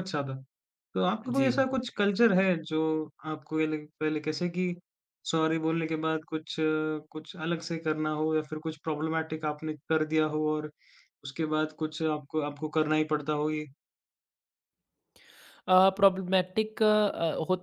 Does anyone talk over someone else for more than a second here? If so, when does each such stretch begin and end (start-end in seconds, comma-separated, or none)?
none